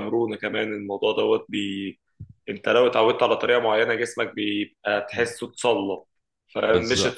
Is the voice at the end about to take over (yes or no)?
no